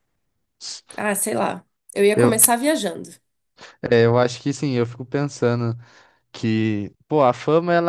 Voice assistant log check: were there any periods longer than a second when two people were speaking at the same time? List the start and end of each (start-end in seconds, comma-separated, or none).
none